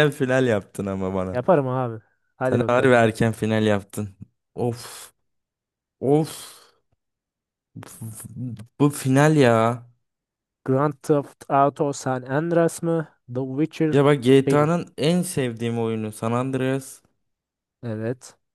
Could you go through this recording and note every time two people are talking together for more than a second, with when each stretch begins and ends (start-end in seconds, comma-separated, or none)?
none